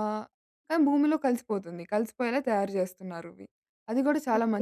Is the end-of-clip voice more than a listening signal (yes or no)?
yes